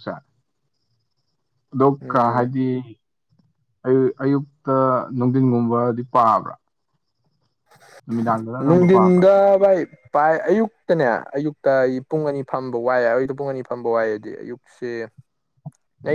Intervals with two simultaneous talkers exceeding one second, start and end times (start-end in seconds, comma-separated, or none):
none